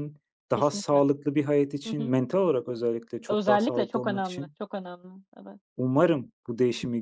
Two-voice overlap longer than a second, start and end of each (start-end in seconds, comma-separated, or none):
3.3-4.5